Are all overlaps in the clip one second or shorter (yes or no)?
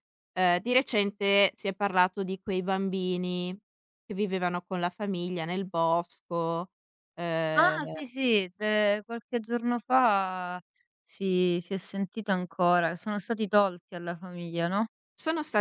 yes